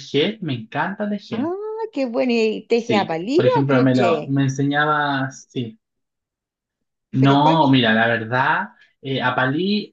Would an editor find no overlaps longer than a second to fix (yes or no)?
no